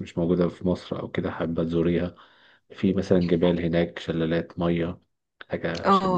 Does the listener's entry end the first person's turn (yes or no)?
yes